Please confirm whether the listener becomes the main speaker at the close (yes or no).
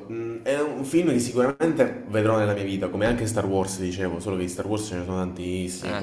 no